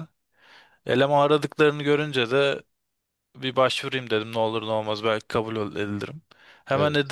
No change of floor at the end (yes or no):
yes